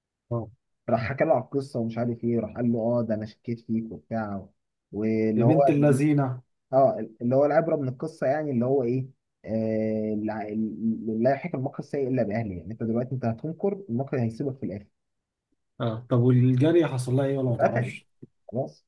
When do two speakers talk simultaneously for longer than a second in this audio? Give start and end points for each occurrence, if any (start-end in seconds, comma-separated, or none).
none